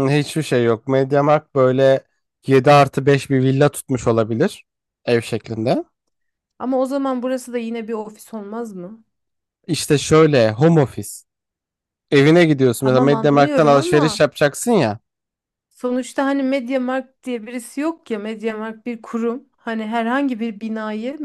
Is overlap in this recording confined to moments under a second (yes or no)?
no